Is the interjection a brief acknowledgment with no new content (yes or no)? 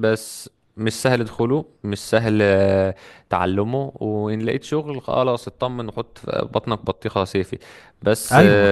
yes